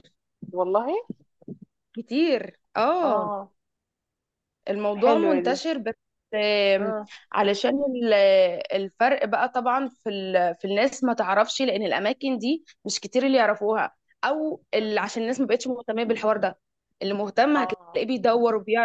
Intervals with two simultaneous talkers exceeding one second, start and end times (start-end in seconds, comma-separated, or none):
none